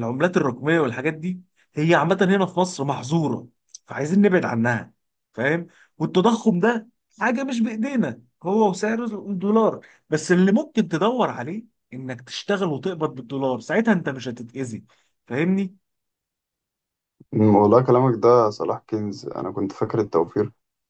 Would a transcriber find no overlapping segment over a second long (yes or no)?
yes